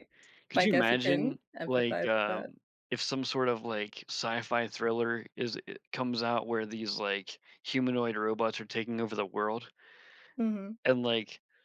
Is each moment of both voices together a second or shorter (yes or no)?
no